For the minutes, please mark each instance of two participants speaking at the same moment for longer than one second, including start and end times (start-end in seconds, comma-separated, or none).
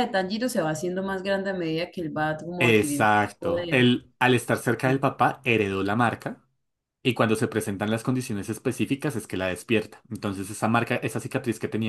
2.6-3.9